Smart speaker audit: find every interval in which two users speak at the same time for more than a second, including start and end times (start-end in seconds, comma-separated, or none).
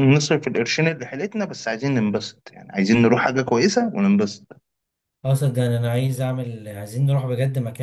none